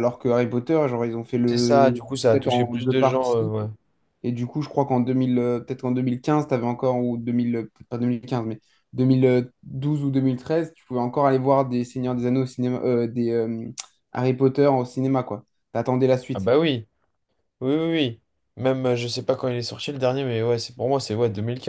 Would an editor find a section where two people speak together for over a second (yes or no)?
yes